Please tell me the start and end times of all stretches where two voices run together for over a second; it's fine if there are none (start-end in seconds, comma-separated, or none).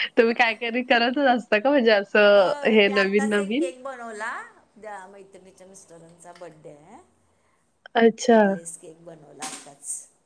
2.3-3.7